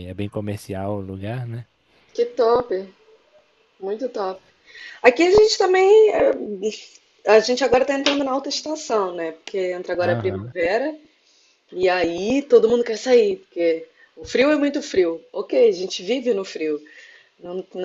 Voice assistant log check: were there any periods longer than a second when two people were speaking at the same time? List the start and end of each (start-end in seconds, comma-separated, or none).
none